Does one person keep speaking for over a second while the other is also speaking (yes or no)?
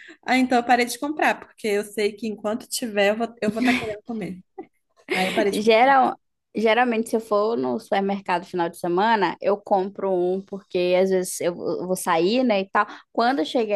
no